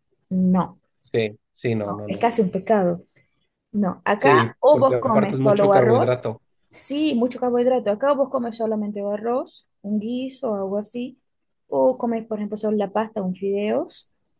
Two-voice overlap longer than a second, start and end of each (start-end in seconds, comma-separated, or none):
4.2-6.3